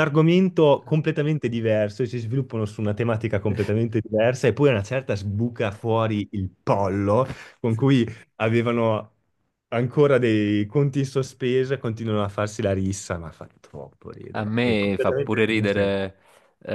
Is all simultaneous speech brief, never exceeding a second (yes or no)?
no